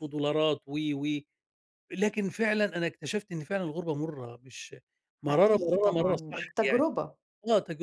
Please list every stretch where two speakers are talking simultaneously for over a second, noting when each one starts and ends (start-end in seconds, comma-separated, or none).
5.3-6.8